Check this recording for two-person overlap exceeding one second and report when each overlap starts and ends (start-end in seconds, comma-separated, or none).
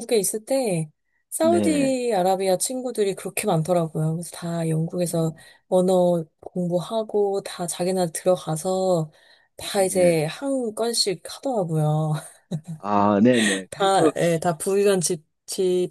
none